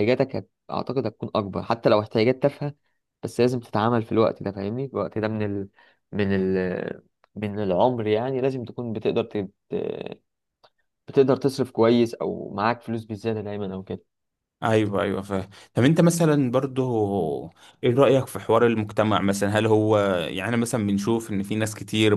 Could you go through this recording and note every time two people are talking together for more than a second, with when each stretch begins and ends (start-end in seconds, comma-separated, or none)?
none